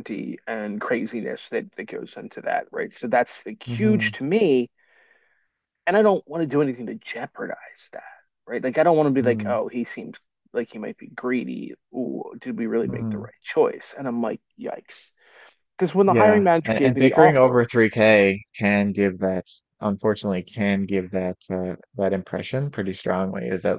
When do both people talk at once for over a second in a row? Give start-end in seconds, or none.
16.1-17.6